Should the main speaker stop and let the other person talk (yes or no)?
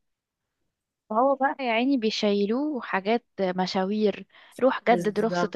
no